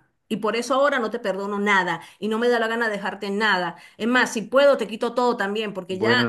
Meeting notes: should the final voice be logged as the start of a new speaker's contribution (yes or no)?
yes